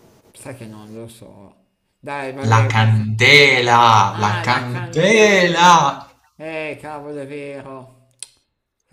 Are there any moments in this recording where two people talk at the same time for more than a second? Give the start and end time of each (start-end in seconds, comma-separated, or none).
4.1-5.7